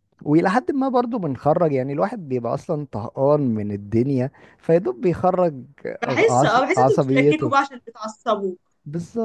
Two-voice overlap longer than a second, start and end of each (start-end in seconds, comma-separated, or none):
6.0-7.5